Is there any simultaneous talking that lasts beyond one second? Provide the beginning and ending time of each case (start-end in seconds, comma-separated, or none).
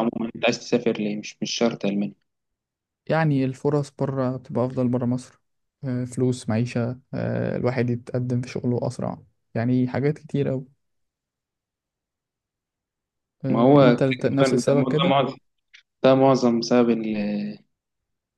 13.5-15.2